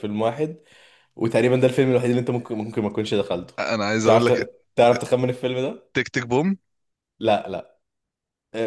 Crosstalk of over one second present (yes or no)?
no